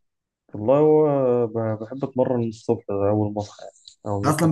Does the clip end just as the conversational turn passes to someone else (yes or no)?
yes